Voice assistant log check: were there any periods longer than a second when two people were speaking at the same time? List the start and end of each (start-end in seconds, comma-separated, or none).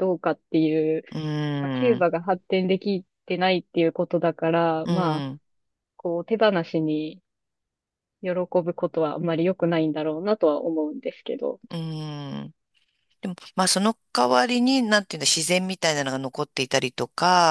none